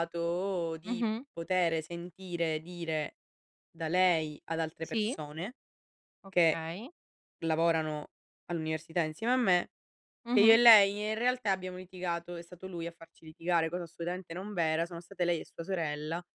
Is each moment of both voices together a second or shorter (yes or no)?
yes